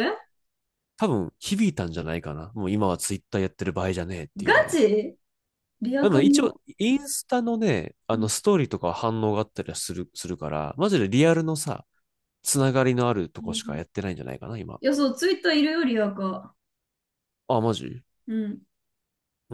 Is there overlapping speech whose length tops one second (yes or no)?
no